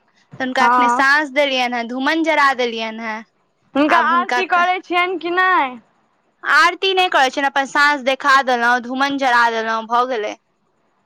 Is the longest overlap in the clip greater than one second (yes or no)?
no